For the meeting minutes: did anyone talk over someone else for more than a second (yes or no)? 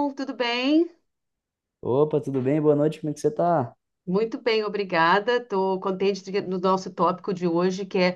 no